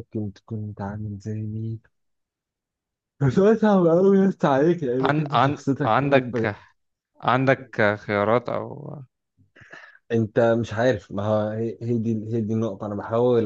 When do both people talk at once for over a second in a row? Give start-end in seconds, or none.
5.0-6.5